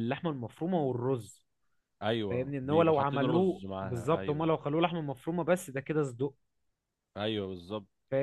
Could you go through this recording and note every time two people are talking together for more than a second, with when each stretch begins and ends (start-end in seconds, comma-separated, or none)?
2.3-4.5